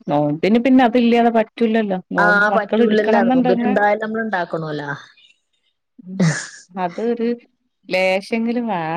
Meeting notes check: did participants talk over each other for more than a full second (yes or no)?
yes